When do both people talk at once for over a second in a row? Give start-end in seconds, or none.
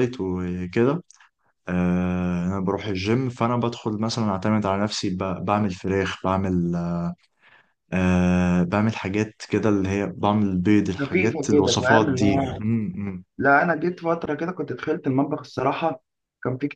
11.0-12.6